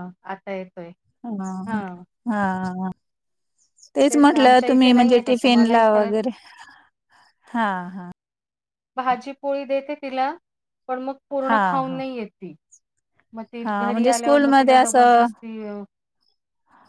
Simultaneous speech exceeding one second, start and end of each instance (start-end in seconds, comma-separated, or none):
4.3-6.1, 13.6-15.2